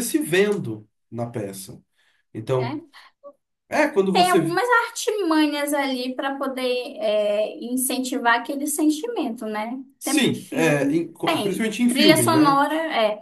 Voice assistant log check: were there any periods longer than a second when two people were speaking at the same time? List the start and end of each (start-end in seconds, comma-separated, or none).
10.0-12.6